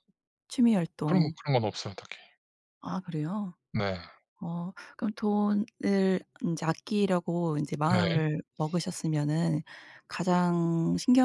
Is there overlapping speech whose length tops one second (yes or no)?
no